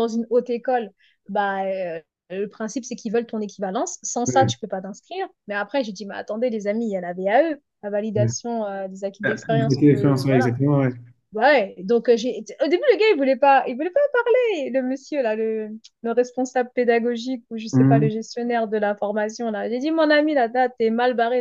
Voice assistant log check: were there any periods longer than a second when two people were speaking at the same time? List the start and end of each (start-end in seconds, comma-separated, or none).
9.3-10.5